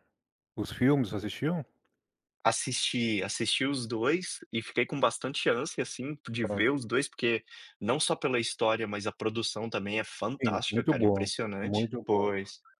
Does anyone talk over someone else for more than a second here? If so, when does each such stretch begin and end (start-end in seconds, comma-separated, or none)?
10.4-12.3